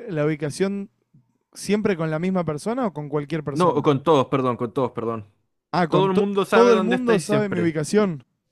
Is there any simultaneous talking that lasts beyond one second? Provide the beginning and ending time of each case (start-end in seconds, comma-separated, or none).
5.9-7.7